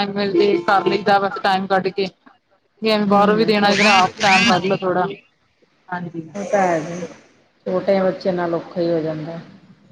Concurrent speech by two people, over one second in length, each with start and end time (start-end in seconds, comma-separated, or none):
3.1-4.5